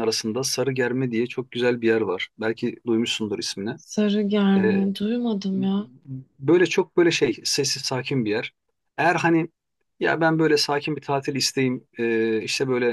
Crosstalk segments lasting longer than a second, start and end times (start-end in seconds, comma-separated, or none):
none